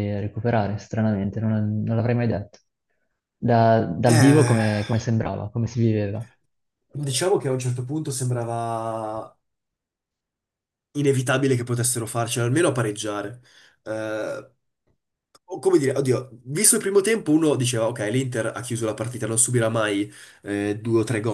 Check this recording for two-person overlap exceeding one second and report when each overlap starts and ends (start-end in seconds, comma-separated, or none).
none